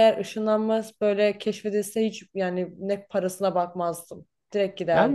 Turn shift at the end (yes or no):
yes